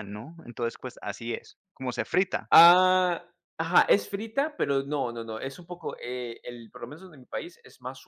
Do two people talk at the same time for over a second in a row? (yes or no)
no